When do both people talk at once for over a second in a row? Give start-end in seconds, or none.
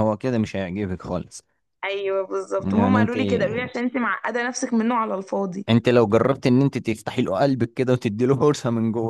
none